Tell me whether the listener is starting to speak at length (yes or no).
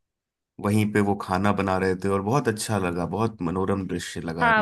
yes